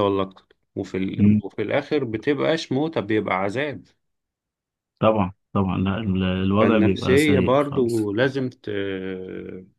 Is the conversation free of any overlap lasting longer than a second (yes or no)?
no